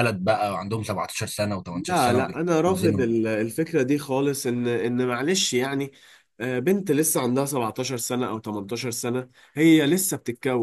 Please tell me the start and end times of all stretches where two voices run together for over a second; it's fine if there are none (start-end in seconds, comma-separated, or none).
1.9-3.1